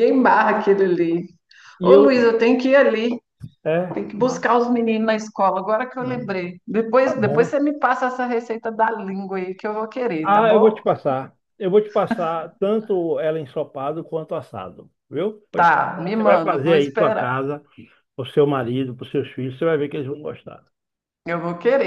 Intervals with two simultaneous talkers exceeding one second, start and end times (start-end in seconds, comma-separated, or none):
15.6-17.3